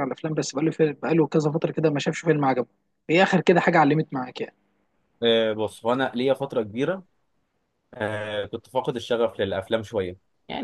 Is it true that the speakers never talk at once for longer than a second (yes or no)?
yes